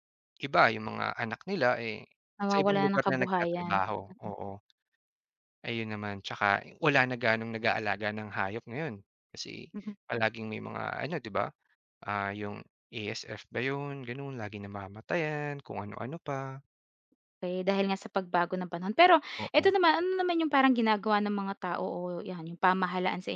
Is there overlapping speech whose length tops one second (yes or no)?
yes